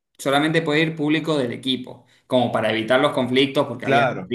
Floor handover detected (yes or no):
no